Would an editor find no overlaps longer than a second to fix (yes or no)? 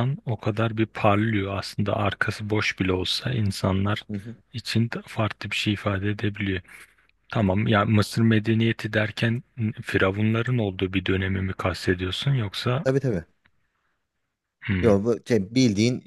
yes